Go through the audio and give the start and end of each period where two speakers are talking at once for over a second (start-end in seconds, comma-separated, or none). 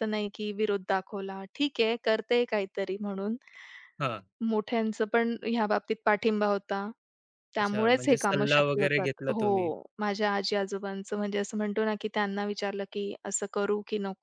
7.6-9.7